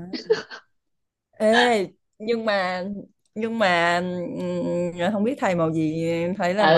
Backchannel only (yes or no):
no